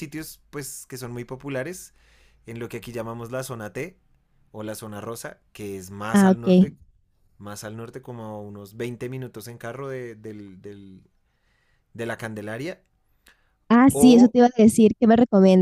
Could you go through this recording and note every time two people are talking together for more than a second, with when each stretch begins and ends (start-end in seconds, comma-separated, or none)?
none